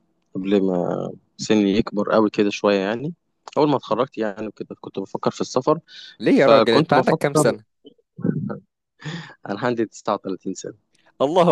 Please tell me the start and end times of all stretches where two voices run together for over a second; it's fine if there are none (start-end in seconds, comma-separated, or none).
6.3-7.5